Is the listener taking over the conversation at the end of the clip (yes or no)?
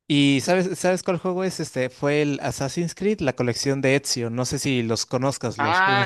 yes